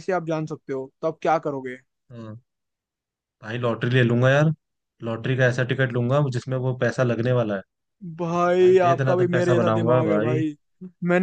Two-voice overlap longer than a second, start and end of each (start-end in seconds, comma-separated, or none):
8.4-10.4